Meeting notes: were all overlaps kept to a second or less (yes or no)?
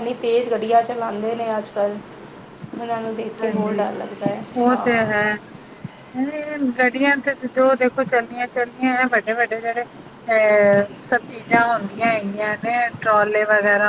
yes